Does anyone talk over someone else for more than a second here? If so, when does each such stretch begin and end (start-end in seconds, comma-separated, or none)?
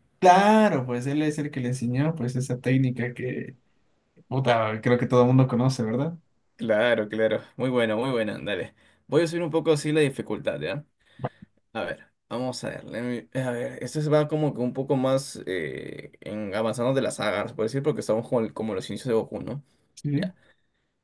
none